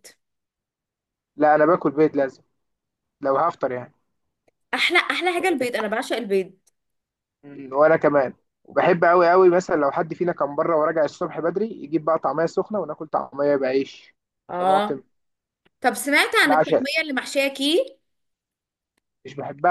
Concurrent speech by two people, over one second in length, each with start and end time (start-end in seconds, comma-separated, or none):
none